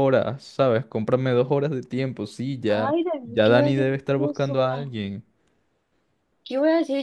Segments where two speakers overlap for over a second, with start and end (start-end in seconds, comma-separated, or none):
2.7-4.9